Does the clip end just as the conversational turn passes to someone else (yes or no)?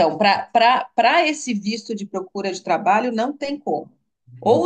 no